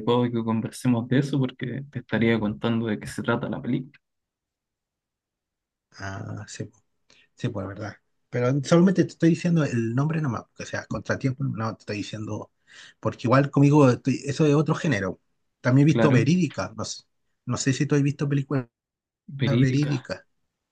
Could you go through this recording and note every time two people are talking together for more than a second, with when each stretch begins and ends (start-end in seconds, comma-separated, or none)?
none